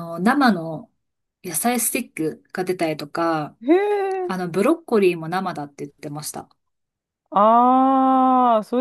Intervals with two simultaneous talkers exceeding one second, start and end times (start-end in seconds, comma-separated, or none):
none